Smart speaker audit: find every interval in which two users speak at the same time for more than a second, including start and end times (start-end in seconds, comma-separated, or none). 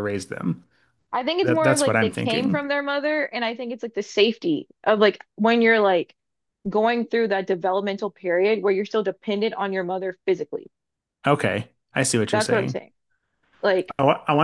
1.4-2.6